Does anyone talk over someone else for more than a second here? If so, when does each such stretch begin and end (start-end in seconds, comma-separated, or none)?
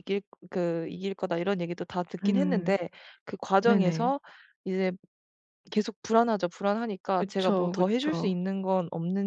7.1-8.4